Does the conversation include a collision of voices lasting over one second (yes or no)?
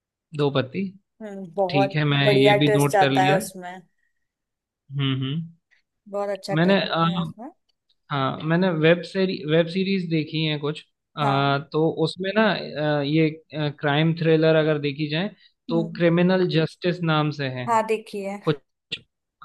yes